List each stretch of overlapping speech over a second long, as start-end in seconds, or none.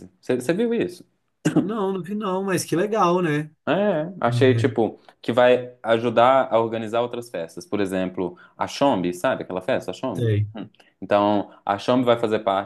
none